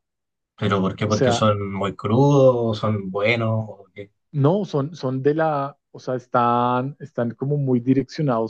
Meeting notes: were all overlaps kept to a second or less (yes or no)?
yes